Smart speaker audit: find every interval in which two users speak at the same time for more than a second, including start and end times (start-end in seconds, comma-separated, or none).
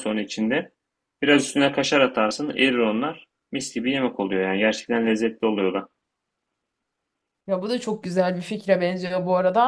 none